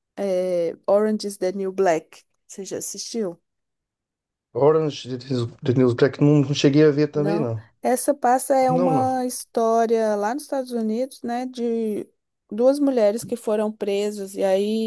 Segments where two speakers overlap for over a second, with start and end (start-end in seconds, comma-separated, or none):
none